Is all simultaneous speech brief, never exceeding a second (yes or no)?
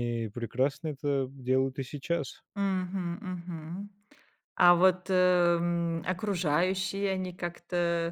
yes